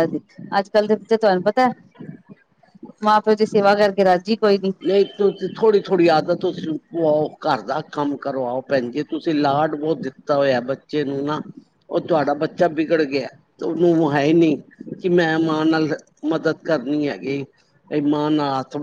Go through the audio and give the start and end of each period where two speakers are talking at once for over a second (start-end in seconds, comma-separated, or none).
none